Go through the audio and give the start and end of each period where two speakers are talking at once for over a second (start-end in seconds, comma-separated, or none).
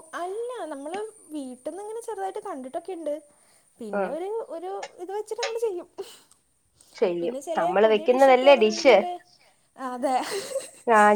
7.2-8.9